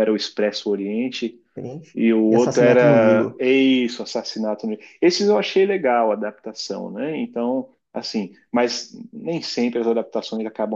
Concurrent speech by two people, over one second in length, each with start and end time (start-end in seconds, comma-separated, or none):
1.9-3.4